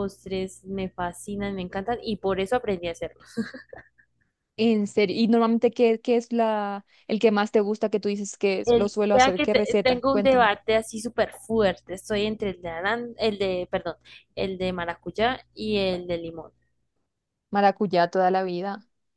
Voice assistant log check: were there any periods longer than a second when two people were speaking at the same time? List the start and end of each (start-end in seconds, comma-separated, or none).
8.7-10.5